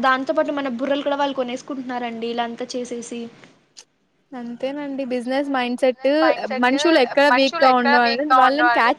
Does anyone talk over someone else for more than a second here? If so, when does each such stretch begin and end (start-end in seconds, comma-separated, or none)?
none